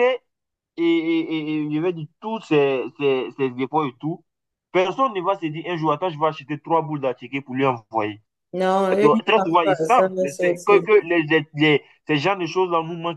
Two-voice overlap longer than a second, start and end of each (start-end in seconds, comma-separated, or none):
9.0-10.9